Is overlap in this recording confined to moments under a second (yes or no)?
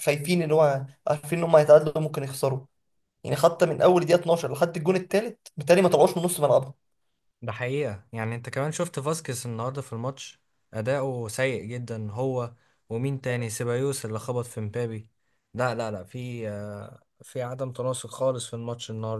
yes